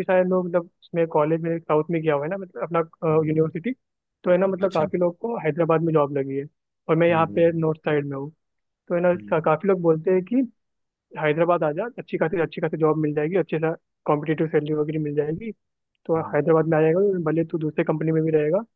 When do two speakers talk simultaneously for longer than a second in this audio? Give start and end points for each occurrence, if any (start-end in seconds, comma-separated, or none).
none